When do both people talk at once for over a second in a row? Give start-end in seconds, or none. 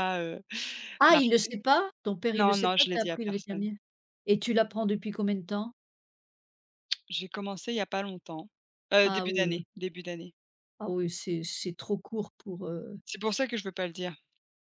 2.4-3.7